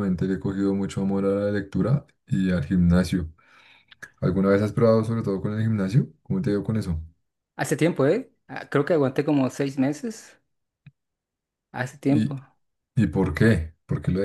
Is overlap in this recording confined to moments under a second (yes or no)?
yes